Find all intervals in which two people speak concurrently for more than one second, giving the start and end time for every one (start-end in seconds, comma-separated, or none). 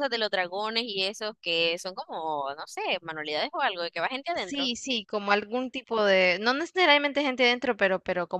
none